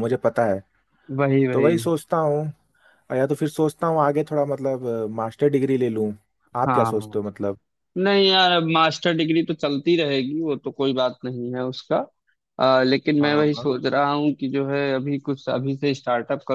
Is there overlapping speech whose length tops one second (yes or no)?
no